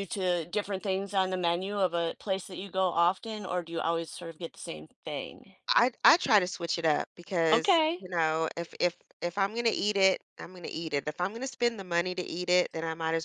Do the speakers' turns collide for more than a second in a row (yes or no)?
no